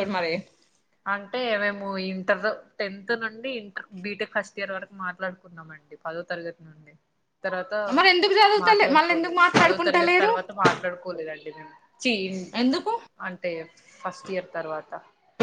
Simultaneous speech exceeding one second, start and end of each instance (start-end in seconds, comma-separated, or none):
8.7-10.3